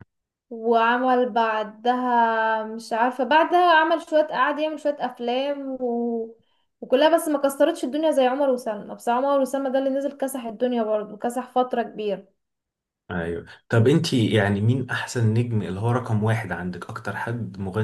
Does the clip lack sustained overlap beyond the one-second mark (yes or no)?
yes